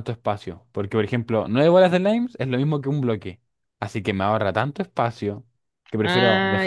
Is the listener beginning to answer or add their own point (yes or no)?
yes